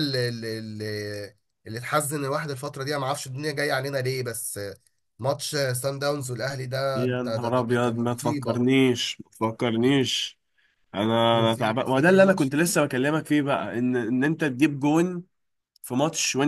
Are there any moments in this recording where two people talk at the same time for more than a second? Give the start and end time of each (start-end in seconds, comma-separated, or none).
6.9-8.7, 11.3-12.5